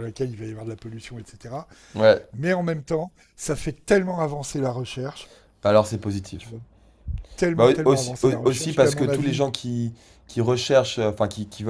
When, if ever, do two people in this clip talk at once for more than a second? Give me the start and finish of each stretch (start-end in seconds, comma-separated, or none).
7.5-9.4